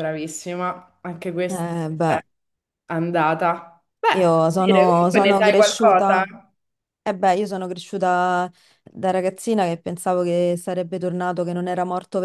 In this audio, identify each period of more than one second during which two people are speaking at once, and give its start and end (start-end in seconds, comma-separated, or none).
4.1-6.2